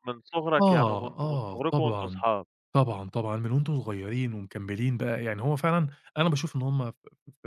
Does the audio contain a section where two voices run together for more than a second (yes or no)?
yes